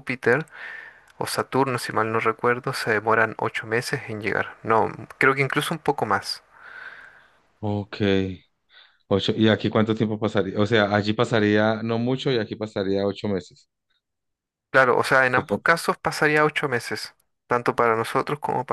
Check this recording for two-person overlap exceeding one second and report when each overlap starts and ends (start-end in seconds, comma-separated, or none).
none